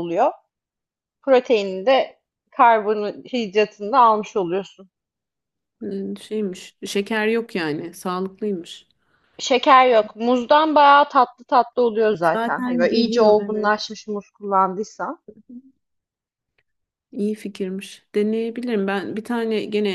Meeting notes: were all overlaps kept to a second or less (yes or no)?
no